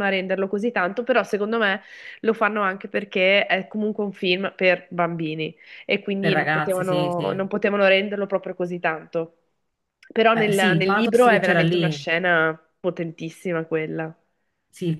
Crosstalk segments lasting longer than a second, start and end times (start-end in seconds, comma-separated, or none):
6.2-7.5, 10.3-12.0